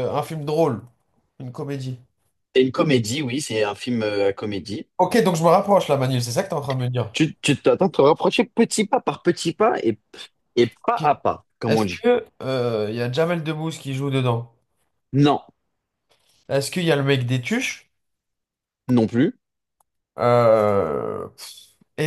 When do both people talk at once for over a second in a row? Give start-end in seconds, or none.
none